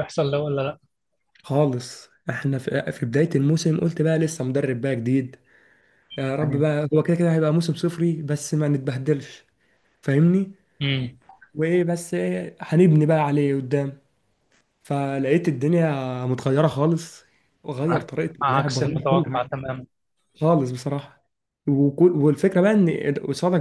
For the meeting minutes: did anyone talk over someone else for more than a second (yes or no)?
yes